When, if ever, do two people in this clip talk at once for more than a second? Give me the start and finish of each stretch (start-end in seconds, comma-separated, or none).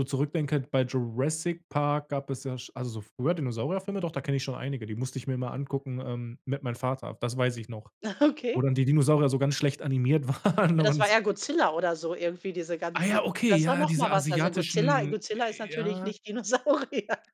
12.9-16.1